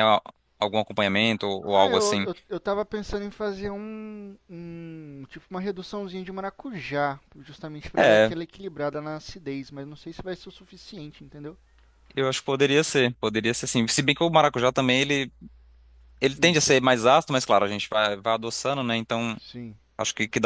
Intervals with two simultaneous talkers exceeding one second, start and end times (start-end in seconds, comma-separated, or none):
none